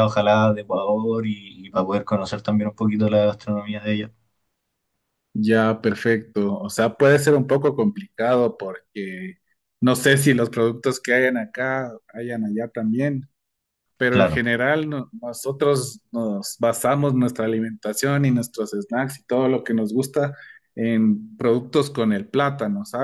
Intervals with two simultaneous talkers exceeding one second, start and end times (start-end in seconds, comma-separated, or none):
none